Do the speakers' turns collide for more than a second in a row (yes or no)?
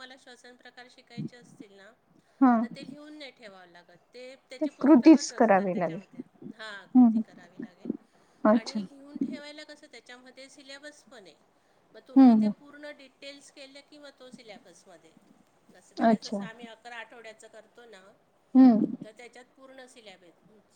yes